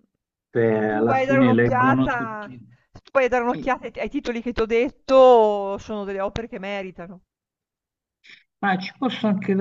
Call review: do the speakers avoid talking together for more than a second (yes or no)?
no